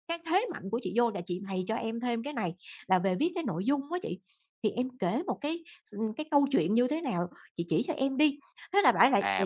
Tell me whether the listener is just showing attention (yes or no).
no